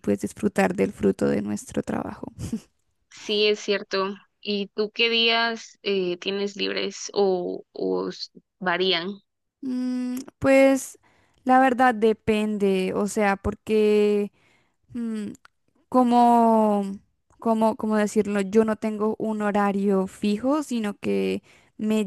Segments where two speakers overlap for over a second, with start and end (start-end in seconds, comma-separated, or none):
none